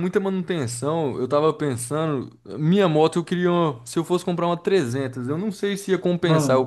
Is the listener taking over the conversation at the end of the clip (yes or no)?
no